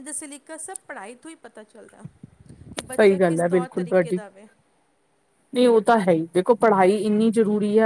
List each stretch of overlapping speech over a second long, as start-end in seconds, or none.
2.9-4.2